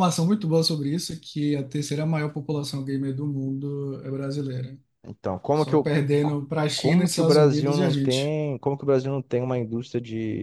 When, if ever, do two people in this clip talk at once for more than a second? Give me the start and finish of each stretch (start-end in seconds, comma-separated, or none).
6.8-8.3